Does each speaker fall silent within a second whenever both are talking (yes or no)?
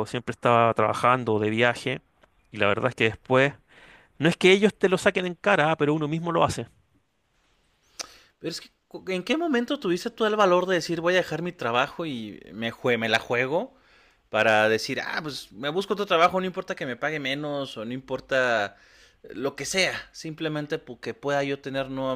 yes